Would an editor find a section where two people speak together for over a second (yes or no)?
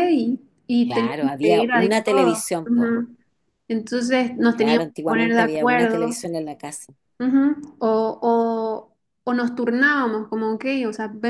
yes